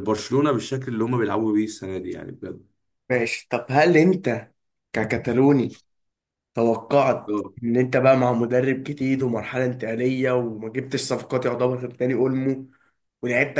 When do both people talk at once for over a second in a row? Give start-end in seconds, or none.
none